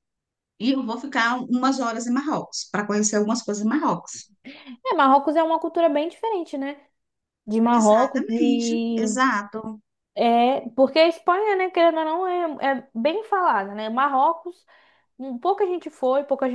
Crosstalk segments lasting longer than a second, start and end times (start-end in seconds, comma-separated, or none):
7.7-9.2